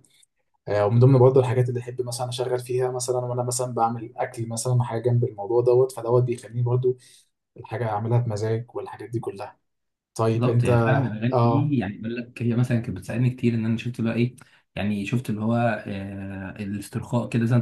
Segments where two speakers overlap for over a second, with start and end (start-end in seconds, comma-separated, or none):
none